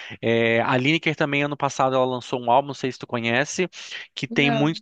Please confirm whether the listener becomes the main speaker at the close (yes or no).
no